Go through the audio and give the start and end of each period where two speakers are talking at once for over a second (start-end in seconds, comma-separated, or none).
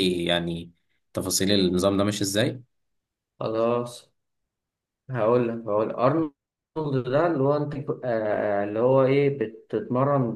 none